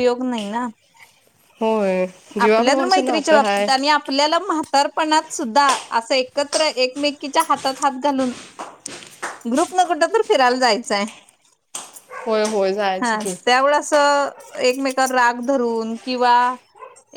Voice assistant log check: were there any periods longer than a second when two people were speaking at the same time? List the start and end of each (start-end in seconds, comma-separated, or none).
2.4-3.6